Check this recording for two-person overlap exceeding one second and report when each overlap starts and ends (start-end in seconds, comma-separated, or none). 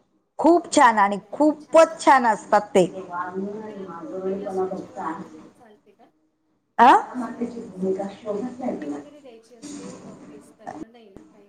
0.6-2.2